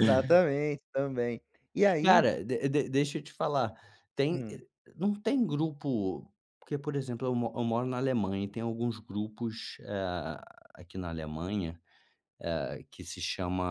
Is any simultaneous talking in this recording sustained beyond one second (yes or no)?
no